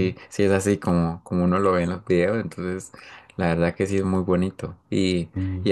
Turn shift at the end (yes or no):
no